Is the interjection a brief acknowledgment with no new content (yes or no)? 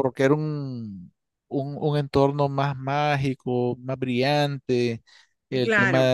yes